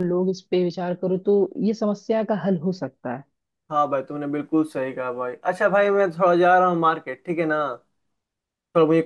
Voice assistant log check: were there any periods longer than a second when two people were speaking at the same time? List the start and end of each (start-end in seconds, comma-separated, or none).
none